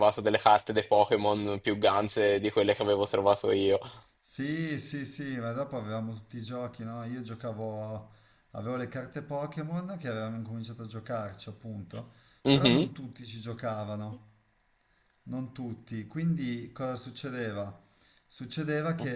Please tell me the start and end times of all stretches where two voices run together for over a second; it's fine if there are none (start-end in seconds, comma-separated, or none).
none